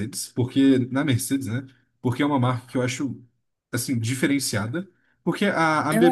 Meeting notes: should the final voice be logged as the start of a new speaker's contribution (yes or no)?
no